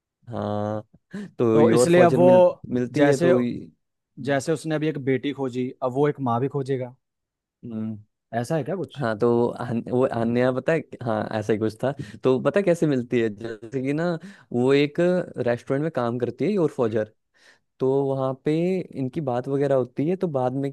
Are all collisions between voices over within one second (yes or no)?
no